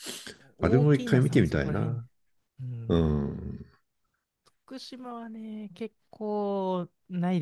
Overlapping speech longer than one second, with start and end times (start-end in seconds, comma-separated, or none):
0.6-2.0